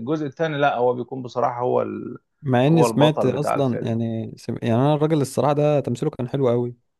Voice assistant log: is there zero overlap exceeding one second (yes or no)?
no